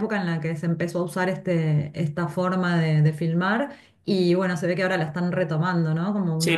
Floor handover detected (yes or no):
yes